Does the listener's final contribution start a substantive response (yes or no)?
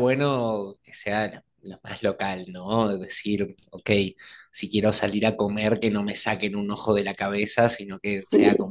no